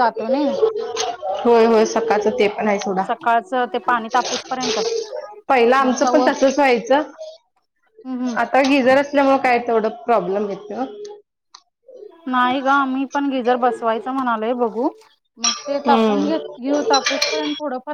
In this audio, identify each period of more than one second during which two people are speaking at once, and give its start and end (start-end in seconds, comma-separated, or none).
none